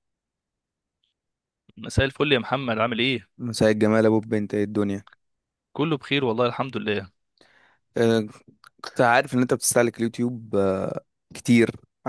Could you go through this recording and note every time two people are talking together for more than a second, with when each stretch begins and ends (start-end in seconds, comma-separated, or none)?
none